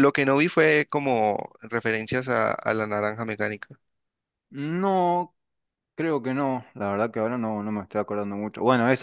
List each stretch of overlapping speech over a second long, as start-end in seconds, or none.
none